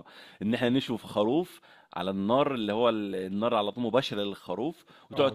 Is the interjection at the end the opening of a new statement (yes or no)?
no